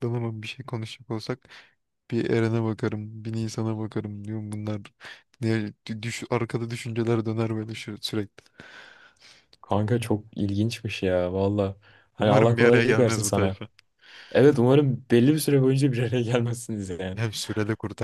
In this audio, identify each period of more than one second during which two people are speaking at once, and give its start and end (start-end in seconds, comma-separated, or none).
12.2-13.6